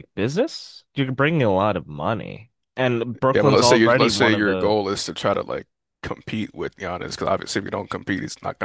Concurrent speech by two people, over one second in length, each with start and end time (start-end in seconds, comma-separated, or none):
3.3-4.8